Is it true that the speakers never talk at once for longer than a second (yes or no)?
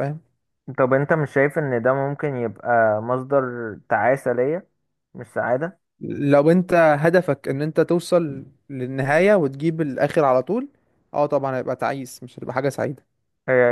yes